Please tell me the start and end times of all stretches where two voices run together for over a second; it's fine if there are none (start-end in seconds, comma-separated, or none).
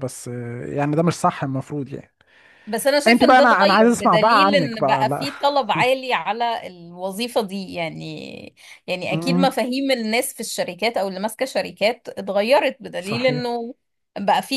3.1-5.3